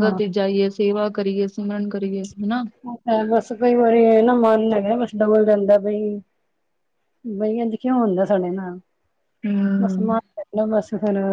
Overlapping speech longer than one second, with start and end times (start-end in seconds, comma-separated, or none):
none